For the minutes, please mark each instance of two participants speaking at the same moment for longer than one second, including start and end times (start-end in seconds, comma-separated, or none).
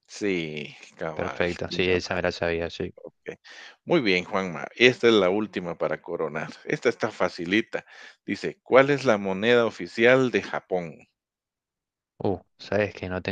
1.1-2.5